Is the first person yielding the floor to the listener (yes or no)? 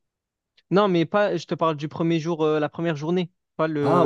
yes